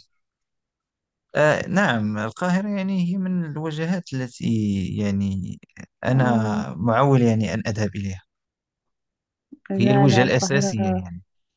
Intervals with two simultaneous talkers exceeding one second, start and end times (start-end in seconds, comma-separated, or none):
9.8-11.1